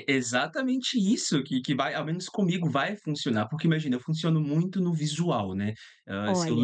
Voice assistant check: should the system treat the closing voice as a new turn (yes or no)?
no